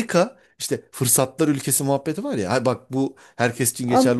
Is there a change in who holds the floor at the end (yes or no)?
yes